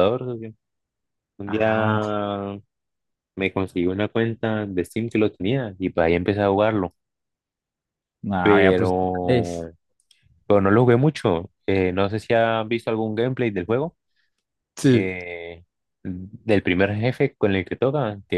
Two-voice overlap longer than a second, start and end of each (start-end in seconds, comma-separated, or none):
8.4-9.7